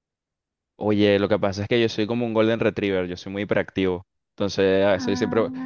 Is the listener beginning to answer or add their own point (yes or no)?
no